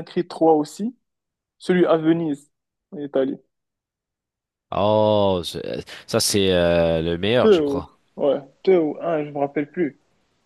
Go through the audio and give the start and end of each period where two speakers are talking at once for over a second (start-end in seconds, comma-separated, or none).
none